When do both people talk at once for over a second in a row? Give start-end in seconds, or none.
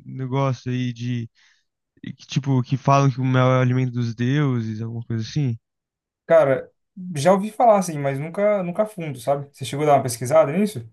none